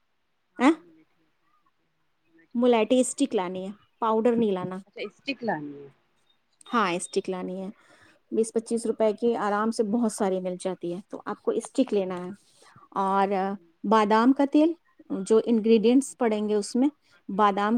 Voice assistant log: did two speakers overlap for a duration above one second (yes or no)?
no